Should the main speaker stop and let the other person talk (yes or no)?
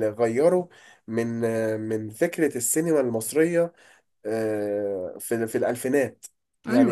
no